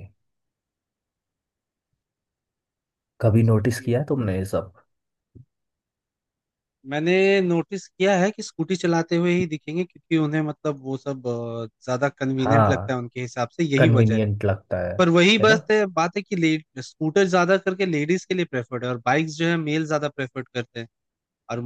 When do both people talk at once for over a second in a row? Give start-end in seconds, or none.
none